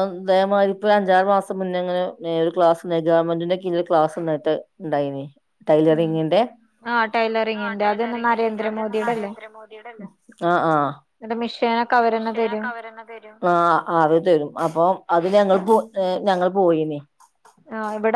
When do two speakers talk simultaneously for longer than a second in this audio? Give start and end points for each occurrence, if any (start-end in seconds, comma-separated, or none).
7.6-9.3, 11.2-12.7